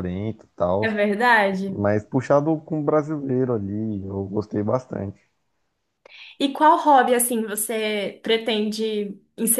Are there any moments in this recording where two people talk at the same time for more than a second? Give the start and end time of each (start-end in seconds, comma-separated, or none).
none